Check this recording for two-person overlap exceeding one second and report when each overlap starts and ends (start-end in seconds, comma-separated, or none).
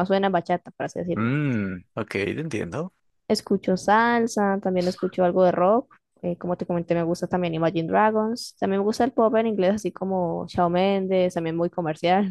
none